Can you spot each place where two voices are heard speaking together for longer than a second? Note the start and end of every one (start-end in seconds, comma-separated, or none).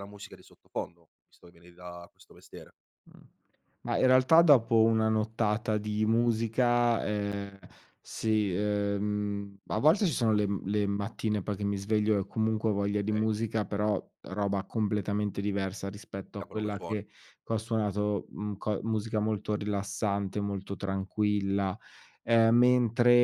none